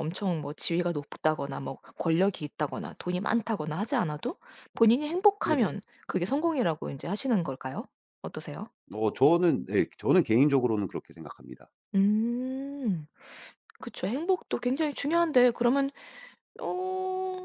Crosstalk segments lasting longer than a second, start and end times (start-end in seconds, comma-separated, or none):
none